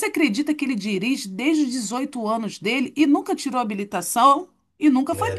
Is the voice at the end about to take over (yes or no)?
yes